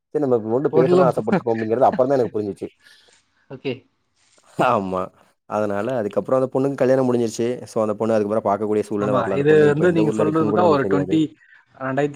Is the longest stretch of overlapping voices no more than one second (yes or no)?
yes